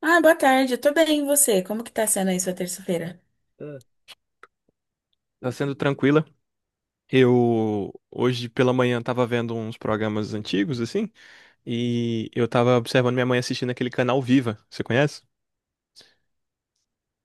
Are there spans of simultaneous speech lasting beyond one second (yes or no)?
no